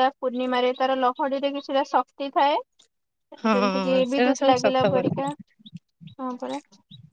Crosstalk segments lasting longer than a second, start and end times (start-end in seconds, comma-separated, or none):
3.4-5.1